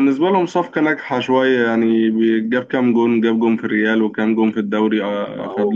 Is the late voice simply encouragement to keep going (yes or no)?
no